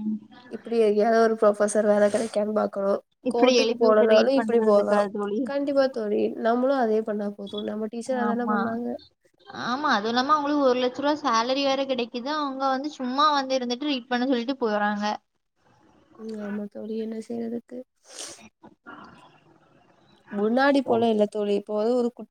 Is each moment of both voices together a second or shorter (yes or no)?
no